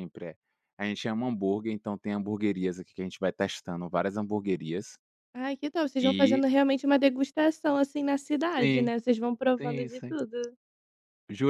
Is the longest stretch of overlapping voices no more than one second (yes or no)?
yes